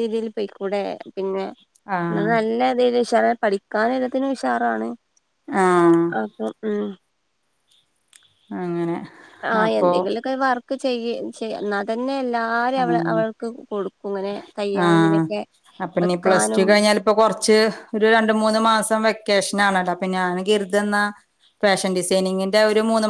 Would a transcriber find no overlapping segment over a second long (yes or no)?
yes